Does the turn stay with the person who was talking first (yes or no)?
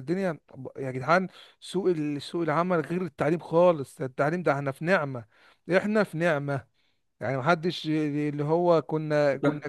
yes